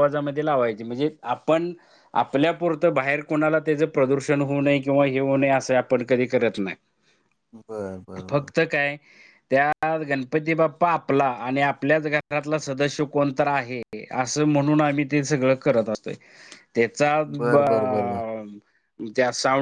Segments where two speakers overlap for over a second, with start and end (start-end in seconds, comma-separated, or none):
none